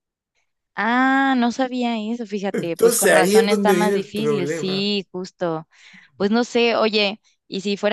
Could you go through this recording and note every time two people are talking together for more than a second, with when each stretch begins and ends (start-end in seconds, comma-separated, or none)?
2.5-4.9